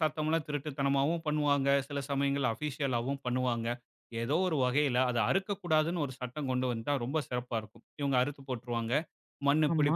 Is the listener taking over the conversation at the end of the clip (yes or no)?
no